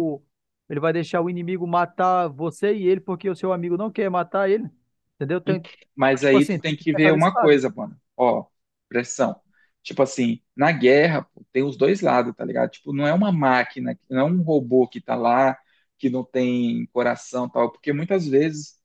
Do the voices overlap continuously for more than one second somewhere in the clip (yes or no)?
yes